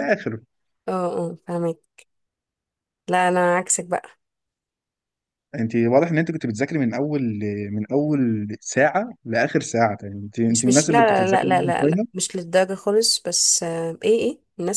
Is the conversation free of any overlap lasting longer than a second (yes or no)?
no